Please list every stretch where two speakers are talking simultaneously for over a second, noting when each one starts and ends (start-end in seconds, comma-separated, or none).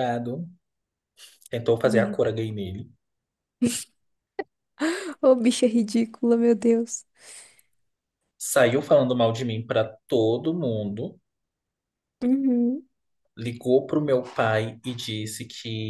none